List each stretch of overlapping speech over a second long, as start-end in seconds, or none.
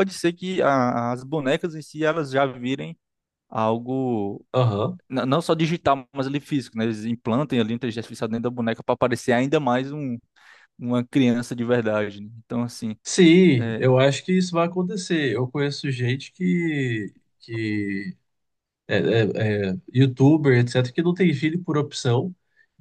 none